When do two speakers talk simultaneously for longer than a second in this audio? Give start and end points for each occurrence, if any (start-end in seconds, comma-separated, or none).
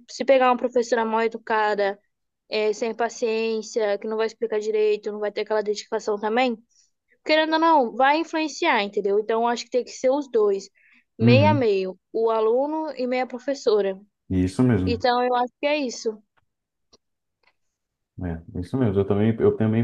none